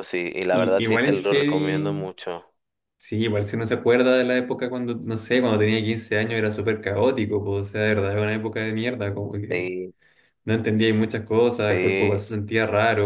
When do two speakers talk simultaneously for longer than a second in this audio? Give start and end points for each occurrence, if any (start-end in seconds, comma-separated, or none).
0.5-2.1